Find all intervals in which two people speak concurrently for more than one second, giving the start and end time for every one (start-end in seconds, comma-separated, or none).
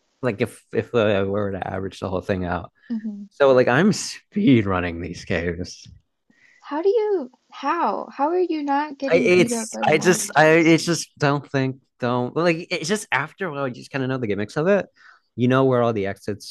9.1-10.8